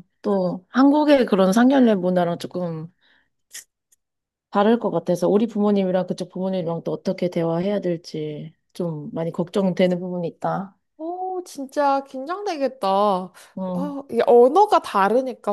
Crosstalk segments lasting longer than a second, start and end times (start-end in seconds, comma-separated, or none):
none